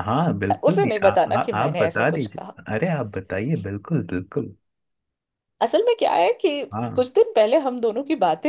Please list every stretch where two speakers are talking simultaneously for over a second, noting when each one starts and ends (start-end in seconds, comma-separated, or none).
0.6-2.5